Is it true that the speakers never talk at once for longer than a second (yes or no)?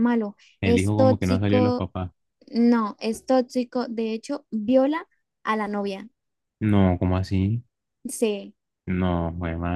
no